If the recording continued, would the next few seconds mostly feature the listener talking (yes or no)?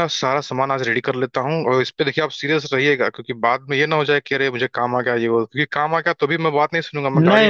yes